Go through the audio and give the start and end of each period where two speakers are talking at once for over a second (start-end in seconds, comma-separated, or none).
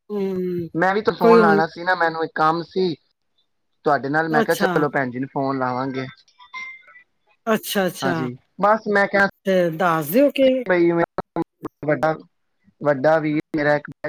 none